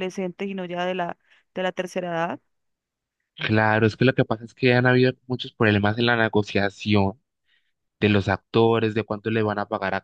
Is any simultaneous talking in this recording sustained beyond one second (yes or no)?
no